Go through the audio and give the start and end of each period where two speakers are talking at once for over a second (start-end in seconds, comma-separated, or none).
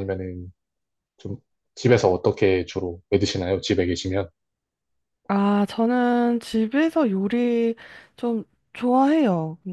none